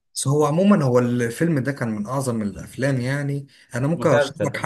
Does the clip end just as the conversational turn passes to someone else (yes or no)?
no